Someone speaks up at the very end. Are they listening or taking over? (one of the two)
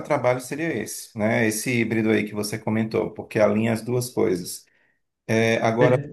listening